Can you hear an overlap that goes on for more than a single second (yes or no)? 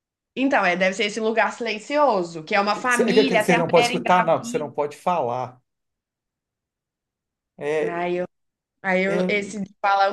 yes